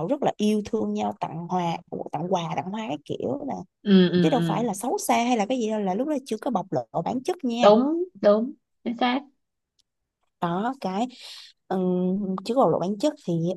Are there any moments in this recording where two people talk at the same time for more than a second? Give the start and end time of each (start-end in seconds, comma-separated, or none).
none